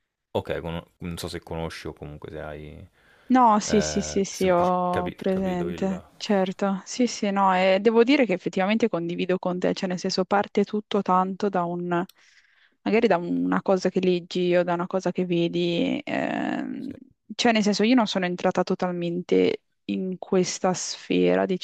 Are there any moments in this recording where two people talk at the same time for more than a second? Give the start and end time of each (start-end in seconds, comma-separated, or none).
3.7-5.9